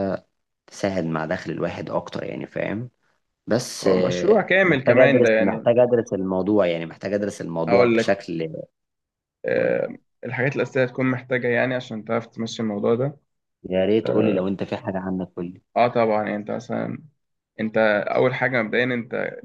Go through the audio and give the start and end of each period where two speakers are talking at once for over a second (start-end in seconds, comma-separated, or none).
3.8-5.7